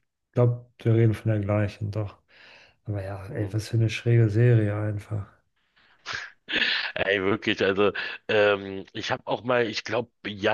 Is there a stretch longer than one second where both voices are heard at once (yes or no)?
no